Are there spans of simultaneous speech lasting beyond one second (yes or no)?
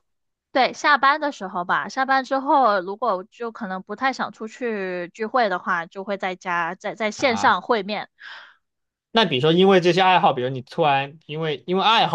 no